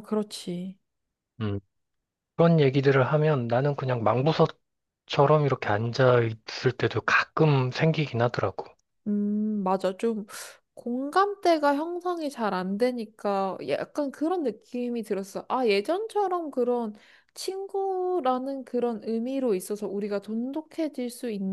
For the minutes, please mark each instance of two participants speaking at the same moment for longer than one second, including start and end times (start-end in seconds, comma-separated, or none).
none